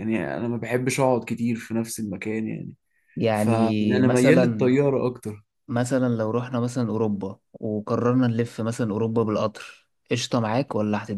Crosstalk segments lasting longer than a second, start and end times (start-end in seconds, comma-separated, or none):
3.3-4.7